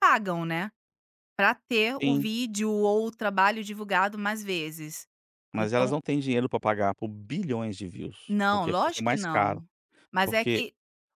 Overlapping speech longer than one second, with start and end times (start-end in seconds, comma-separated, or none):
8.3-9.6